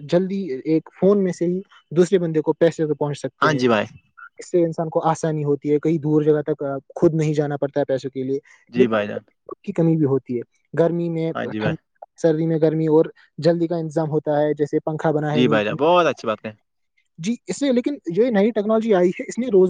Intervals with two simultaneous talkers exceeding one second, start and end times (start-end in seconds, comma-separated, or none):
none